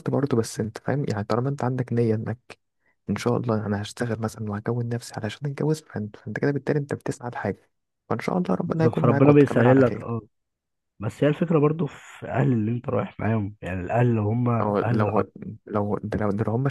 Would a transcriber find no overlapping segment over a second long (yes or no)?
no